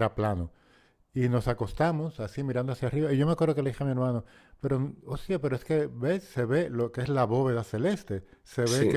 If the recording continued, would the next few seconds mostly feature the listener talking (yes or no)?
no